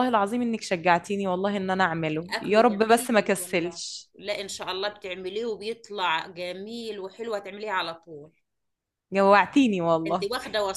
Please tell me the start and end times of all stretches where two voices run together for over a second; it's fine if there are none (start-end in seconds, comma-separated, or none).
2.4-4.1